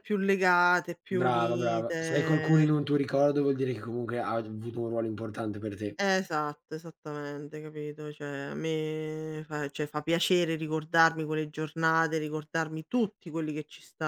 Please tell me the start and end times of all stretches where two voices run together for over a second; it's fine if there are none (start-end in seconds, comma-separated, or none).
1.2-2.7